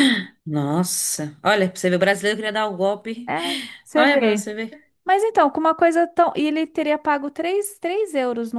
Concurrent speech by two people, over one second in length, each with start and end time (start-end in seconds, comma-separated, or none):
none